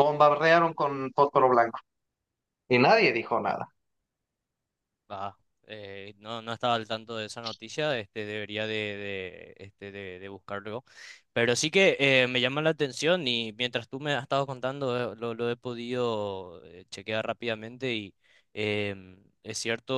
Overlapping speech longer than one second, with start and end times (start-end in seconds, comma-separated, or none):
none